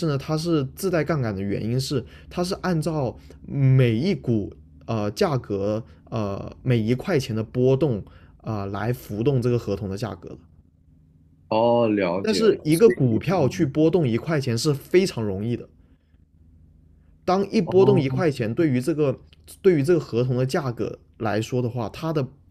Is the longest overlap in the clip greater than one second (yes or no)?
yes